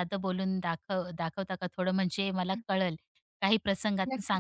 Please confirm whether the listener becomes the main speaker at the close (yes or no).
yes